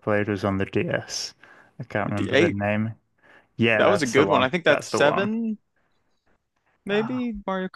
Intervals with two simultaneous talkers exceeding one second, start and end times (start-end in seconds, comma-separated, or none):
3.8-5.3